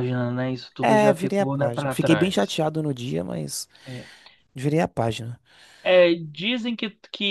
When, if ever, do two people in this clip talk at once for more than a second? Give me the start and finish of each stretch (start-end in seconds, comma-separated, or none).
0.8-2.6